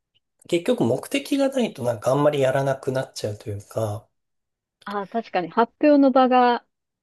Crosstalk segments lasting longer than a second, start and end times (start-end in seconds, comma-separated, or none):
none